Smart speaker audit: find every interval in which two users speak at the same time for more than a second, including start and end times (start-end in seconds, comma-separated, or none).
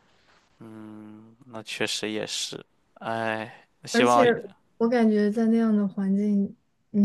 none